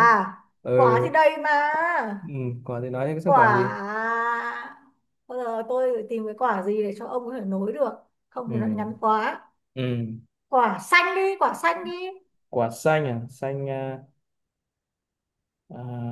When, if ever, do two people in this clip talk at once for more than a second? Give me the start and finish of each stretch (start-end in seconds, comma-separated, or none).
none